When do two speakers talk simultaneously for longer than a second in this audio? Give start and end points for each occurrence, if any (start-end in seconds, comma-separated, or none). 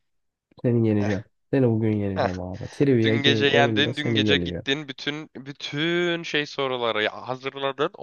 3.0-4.6